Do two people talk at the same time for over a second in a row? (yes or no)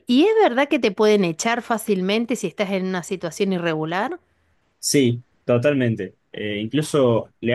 no